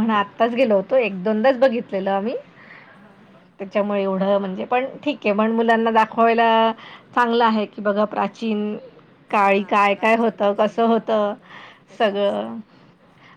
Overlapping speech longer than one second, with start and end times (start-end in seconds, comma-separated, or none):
9.4-11.3